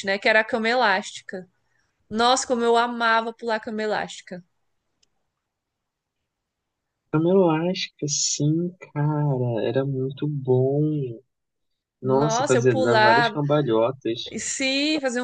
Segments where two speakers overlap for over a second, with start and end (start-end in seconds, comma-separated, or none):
12.0-13.4